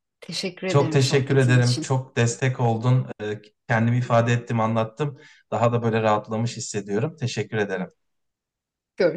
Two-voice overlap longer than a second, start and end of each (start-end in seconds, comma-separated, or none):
0.7-2.0